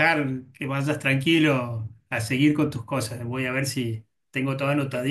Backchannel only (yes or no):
yes